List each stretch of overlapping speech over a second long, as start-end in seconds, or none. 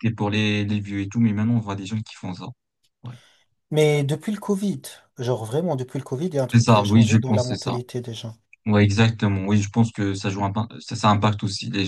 6.5-7.8